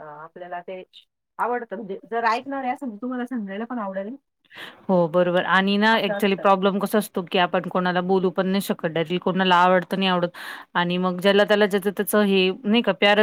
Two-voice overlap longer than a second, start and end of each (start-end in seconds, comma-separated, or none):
none